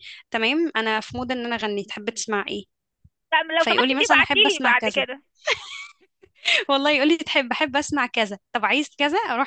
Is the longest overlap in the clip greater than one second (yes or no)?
yes